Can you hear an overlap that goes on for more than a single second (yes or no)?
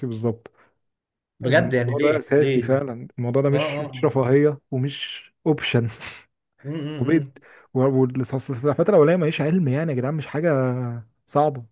yes